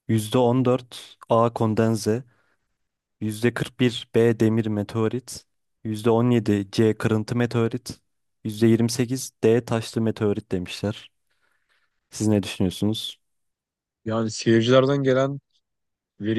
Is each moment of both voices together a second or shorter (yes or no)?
yes